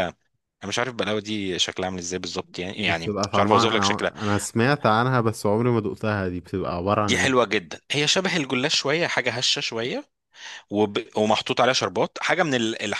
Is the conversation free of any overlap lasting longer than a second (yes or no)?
no